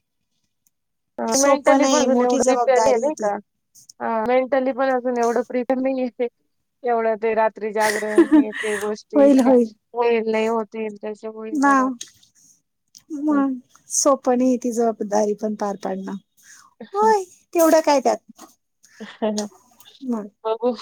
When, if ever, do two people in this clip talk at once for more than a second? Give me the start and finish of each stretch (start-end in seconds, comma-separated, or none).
1.4-3.3